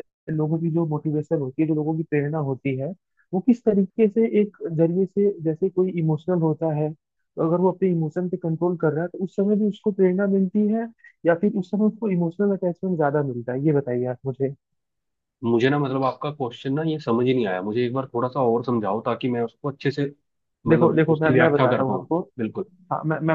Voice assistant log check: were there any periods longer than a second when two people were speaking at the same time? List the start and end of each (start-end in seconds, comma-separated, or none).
20.7-22.2